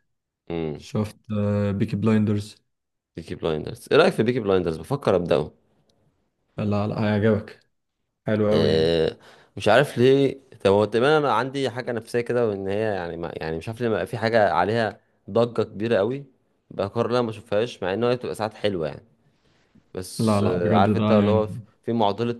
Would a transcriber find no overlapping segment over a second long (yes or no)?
no